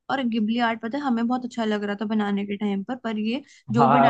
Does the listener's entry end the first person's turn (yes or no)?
no